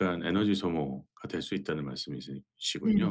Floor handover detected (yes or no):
yes